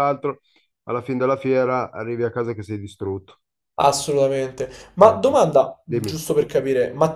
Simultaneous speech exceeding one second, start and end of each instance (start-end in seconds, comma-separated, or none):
none